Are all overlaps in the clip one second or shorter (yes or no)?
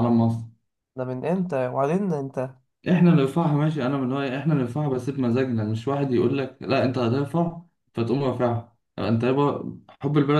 yes